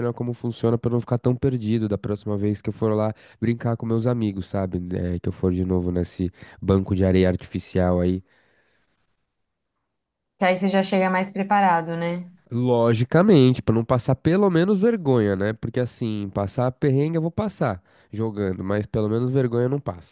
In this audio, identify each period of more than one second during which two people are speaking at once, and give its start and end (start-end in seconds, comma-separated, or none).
none